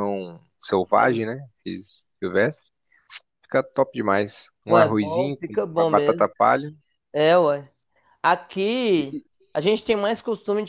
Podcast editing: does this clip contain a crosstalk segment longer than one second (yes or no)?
yes